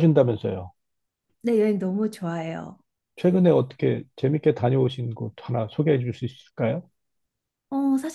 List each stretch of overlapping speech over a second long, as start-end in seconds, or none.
none